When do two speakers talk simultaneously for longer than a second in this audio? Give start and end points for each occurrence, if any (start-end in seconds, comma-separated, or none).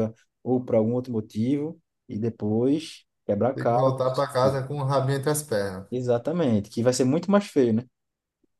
none